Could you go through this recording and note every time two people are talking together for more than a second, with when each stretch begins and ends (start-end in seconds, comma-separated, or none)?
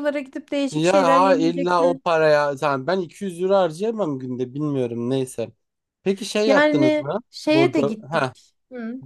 0.7-2.0, 6.5-8.3